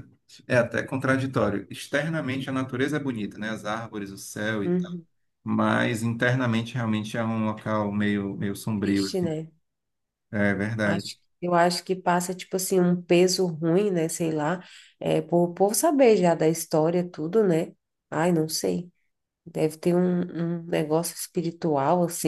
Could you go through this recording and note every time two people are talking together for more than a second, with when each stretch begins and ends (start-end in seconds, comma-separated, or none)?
none